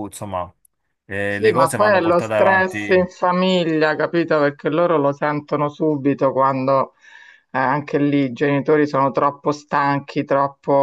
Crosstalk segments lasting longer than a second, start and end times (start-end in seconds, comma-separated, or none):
1.2-3.1